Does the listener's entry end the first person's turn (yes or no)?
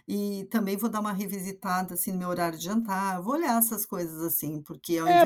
yes